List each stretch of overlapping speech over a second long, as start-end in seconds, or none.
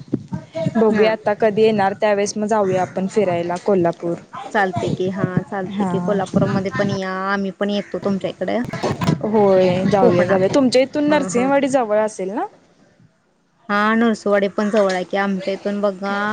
none